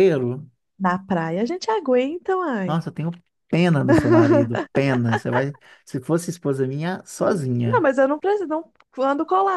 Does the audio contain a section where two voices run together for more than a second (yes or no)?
no